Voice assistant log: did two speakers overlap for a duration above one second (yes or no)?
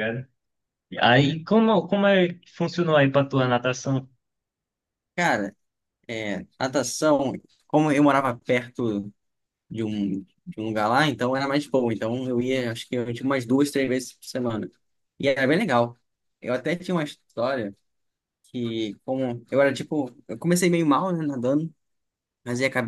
no